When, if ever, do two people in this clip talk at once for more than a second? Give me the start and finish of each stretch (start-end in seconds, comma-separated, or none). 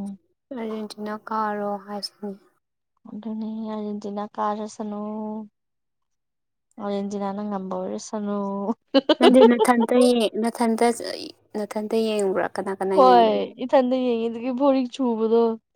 none